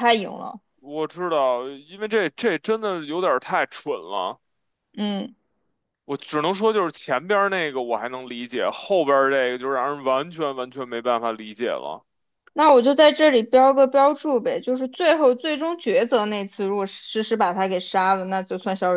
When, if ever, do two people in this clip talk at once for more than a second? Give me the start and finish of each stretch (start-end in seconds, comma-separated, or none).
none